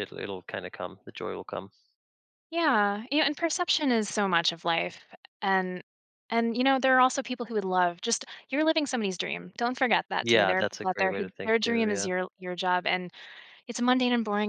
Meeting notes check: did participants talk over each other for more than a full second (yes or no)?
yes